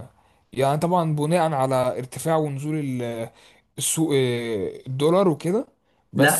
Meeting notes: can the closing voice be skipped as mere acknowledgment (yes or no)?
no